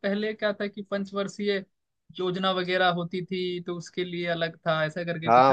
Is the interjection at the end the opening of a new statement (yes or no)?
yes